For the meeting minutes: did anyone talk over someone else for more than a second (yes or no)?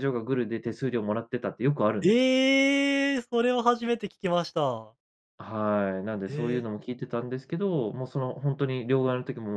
no